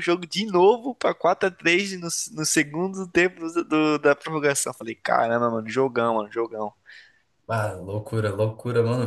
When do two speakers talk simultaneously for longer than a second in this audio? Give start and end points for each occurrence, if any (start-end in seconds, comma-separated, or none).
none